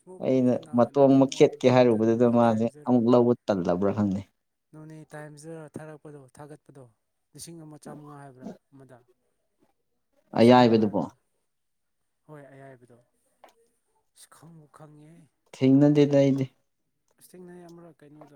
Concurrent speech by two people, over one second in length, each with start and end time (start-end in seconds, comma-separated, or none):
0.7-3.0